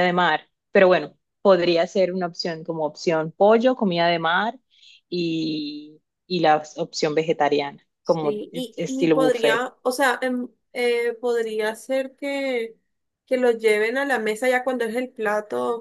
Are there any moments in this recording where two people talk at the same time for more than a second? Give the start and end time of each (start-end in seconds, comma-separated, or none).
8.0-9.7